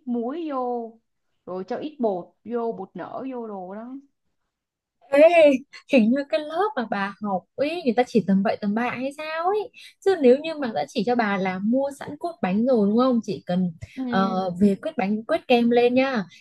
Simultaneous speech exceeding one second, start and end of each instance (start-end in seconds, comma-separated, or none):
none